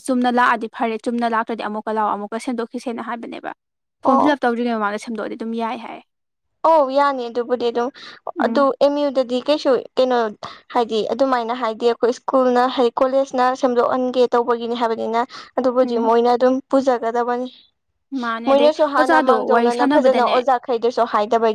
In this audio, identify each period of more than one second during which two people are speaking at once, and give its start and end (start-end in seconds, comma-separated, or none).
18.5-20.3